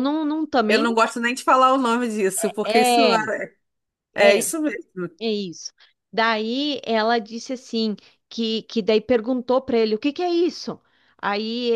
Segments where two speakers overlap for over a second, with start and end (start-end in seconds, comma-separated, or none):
none